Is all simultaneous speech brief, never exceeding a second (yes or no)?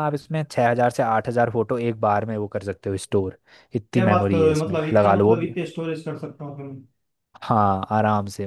no